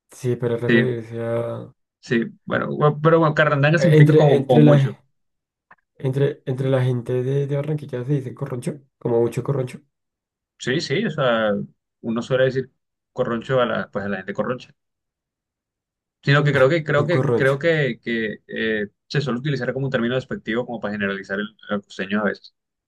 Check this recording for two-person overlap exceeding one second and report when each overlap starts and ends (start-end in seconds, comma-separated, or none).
3.8-5.0